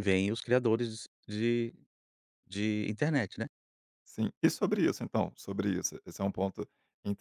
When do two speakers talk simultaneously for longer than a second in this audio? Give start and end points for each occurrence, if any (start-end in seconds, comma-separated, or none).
none